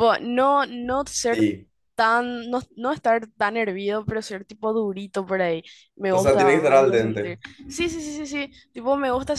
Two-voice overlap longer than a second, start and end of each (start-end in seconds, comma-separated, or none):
6.1-7.4